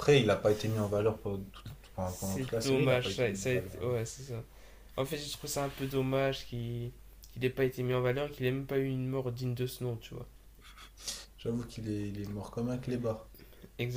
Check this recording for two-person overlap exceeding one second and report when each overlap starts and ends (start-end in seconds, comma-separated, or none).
2.0-3.9